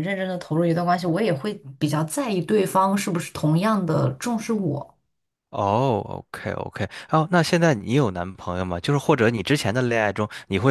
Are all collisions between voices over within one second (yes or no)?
yes